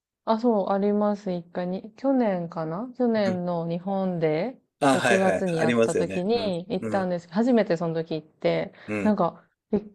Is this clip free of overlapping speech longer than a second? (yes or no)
no